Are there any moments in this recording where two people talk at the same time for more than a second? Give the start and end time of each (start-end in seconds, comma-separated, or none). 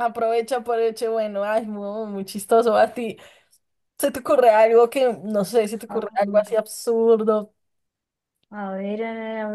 none